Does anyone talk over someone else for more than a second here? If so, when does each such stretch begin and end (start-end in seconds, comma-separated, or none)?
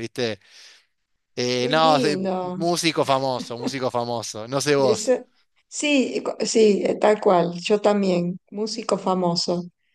none